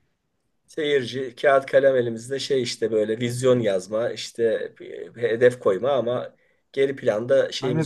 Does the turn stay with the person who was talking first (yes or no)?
no